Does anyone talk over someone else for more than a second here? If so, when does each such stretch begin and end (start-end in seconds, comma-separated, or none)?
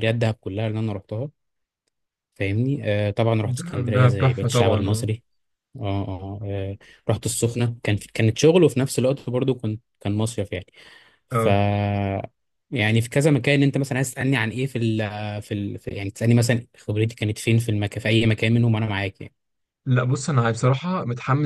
3.6-5.1